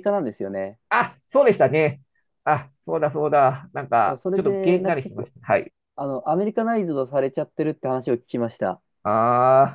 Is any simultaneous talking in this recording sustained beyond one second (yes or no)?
yes